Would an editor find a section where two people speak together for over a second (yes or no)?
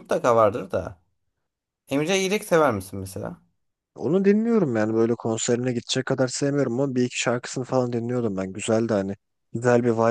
no